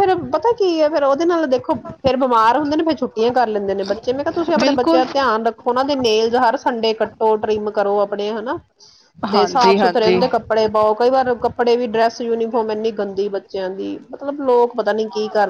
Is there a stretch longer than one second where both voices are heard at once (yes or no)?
yes